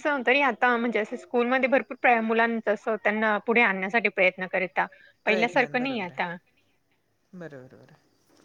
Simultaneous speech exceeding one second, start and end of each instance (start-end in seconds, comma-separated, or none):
none